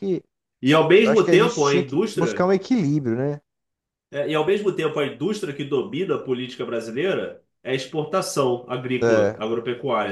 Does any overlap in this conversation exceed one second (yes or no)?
yes